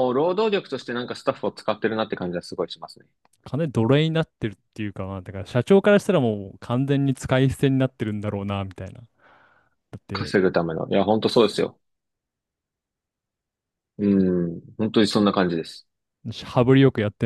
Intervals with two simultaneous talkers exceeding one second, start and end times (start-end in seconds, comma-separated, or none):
none